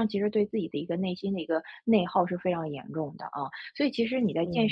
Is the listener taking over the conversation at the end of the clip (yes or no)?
no